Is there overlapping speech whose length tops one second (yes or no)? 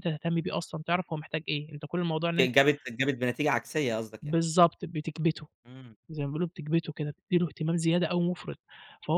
no